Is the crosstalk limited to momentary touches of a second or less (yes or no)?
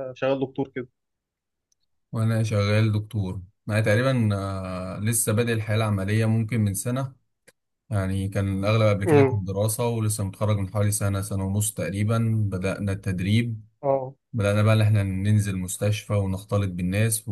yes